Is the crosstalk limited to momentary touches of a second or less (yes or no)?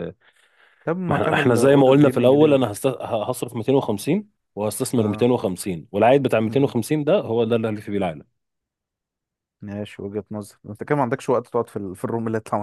no